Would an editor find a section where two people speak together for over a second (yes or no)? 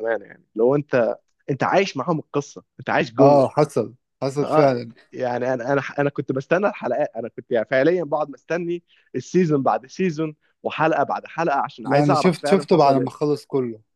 yes